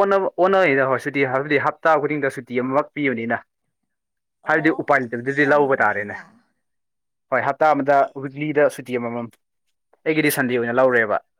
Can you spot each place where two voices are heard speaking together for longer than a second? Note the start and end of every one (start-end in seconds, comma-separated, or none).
4.5-6.2